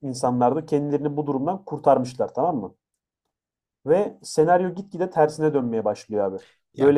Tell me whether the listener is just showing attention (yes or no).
no